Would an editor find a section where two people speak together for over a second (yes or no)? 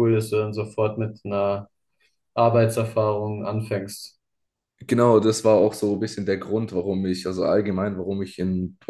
no